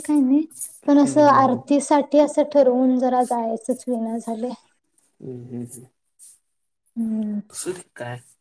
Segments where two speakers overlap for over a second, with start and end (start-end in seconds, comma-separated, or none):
none